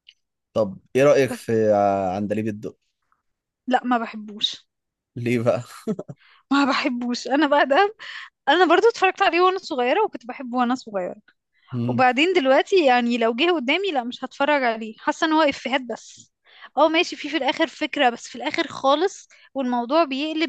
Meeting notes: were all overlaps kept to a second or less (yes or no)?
yes